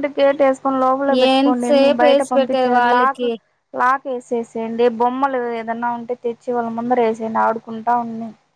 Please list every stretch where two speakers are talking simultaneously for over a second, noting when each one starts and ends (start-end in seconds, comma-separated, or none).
1.3-3.3